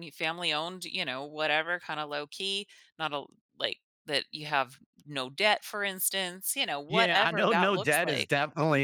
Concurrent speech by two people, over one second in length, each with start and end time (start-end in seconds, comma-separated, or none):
6.9-8.3